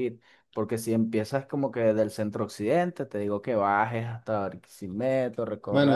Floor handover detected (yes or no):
yes